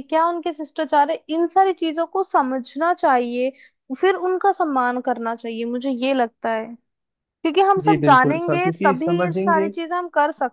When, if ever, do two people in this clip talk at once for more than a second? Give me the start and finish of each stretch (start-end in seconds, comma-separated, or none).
7.8-9.7